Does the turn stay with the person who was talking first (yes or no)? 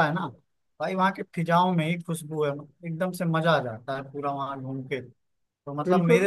yes